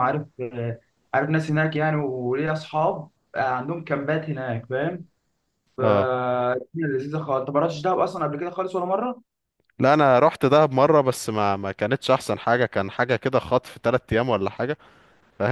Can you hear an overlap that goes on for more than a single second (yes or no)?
no